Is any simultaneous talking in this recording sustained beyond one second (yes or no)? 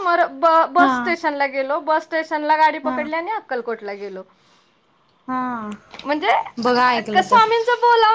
no